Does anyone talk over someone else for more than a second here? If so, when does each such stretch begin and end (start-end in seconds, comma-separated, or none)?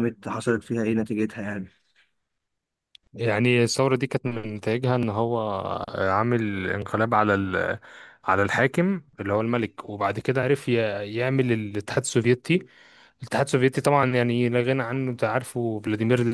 none